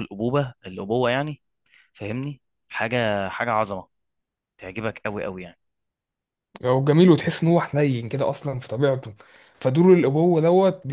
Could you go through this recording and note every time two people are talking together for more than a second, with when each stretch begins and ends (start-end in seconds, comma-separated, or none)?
none